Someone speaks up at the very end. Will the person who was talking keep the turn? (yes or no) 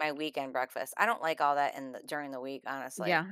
no